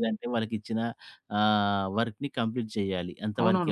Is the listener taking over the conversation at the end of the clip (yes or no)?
yes